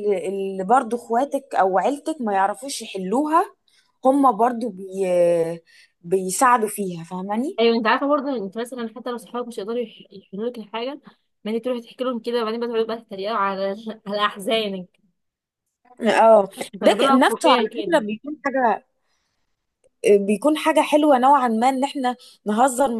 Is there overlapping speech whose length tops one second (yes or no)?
yes